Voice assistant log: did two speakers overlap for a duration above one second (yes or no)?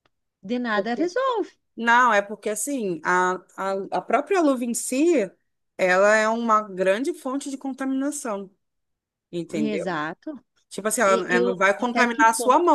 yes